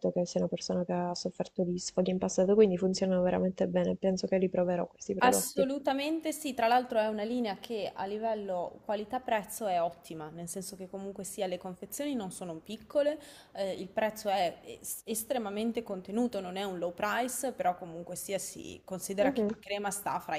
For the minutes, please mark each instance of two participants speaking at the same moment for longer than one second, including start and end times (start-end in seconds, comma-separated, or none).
none